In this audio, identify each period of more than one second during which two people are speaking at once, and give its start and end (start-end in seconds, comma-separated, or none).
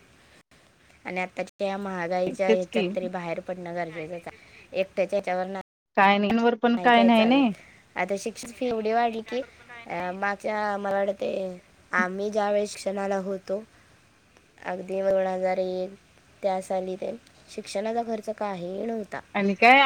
none